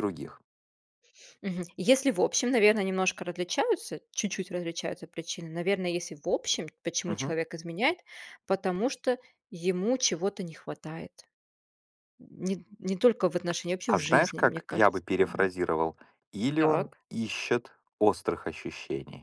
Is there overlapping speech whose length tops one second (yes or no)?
yes